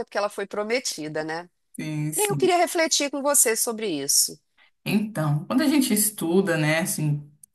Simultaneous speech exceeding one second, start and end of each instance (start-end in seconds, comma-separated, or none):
none